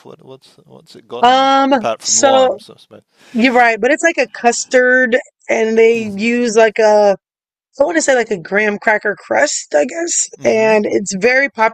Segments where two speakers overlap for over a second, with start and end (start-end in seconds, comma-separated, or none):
1.2-2.6